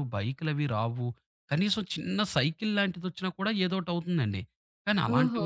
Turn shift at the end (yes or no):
no